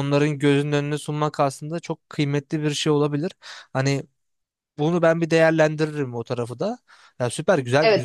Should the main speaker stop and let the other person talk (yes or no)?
yes